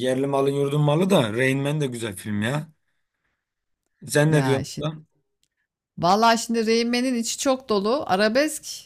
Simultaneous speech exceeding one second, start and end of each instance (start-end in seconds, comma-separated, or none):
none